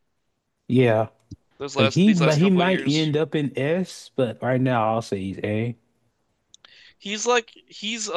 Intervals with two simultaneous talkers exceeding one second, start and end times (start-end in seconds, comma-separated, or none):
1.8-3.1